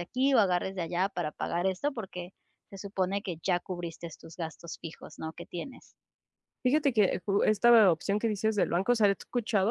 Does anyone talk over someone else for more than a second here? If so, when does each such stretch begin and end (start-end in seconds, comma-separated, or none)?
none